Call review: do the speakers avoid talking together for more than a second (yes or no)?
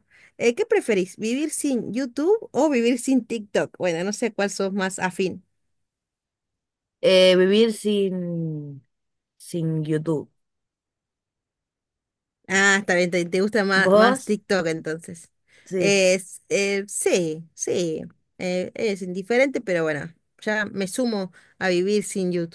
yes